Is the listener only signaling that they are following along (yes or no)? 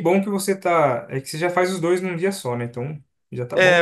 no